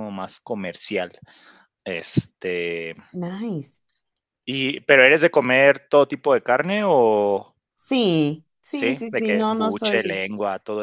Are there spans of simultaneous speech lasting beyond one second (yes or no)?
yes